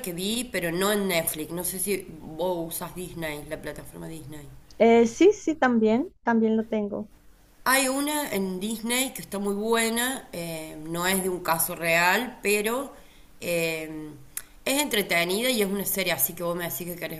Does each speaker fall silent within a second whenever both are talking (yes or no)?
yes